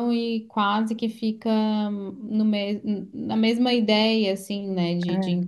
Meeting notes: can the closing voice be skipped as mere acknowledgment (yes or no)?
yes